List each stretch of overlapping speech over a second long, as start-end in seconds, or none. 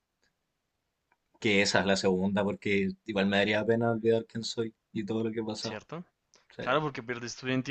none